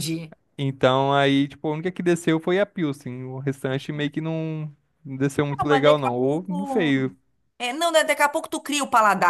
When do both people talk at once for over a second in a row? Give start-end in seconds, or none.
5.6-6.9